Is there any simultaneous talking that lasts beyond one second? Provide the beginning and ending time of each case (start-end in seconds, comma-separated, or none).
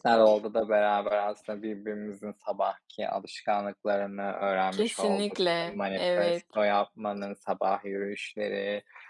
4.7-6.5